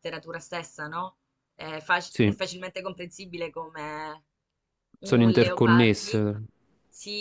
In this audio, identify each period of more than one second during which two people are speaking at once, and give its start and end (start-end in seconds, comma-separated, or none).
5.0-6.2